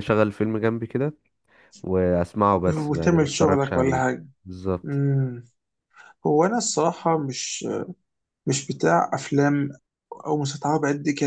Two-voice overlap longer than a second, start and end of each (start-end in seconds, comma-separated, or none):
2.7-4.0